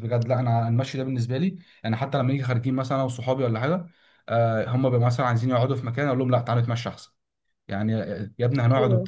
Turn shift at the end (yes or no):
no